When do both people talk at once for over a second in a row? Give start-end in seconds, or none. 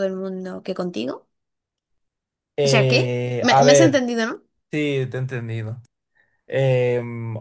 2.6-4.0